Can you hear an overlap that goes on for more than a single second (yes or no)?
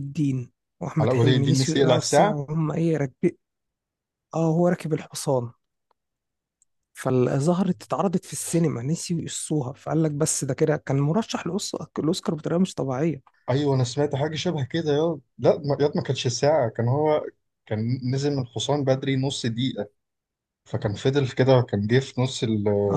yes